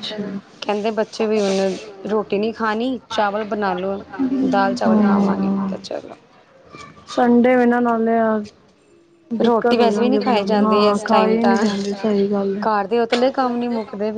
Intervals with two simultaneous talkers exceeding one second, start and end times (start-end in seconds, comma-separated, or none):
9.4-11.5